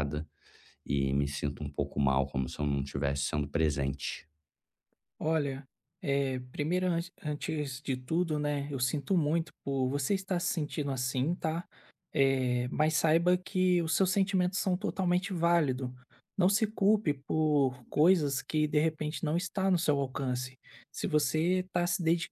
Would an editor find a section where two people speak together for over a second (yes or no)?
no